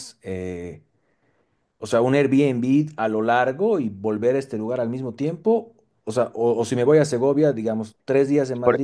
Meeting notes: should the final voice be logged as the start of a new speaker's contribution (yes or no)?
yes